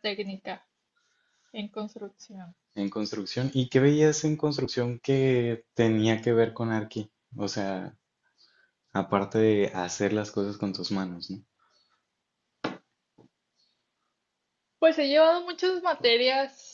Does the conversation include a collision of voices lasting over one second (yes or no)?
no